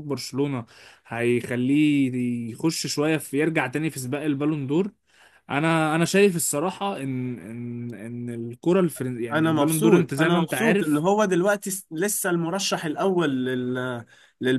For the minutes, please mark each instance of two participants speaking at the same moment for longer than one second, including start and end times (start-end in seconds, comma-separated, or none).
9.3-11.0